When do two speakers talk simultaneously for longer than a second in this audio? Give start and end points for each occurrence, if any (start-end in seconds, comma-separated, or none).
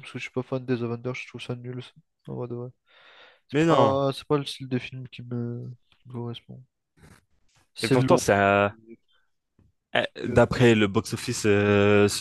none